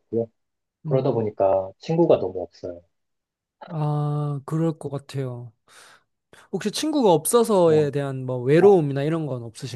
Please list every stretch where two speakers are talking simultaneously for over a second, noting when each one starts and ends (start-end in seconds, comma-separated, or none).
none